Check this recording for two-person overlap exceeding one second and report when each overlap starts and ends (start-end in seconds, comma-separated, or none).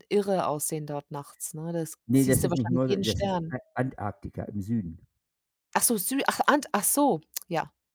2.1-3.5